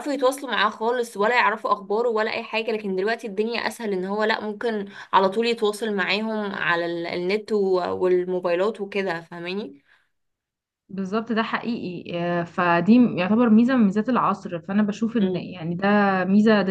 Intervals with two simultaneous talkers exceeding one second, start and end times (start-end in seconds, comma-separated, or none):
none